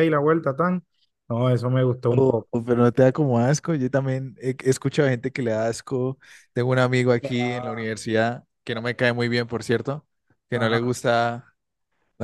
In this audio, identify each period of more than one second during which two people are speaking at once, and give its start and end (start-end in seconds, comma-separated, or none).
none